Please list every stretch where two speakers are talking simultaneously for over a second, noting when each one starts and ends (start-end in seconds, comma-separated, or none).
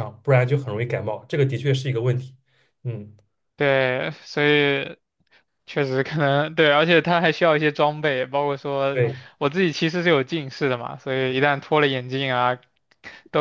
none